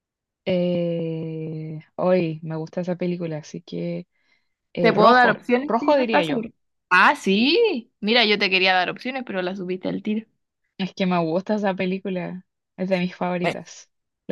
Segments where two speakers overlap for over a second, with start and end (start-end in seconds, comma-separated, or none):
4.8-6.5